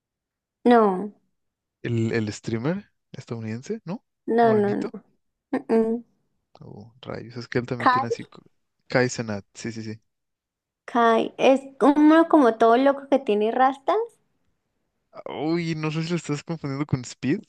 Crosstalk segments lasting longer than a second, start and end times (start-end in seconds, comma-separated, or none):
none